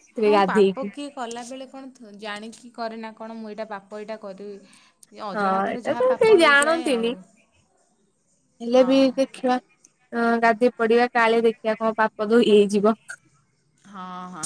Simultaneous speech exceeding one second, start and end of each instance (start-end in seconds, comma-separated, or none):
5.4-7.1